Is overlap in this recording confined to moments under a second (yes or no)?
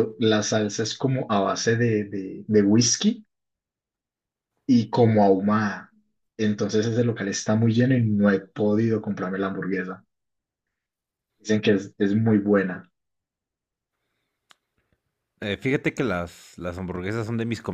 yes